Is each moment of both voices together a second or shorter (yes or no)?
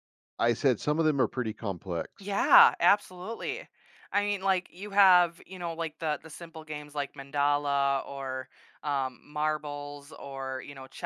yes